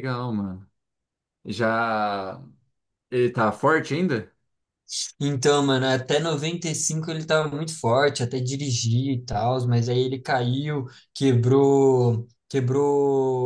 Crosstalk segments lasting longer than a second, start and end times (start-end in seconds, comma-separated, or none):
none